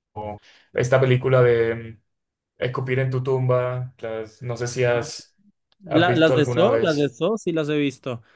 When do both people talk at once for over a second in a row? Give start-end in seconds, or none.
5.9-7.2